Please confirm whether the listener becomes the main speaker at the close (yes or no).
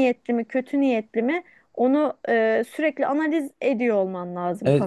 yes